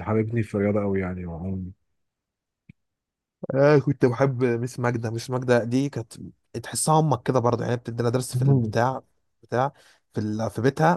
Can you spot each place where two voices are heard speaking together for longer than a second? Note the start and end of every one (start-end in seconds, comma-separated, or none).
none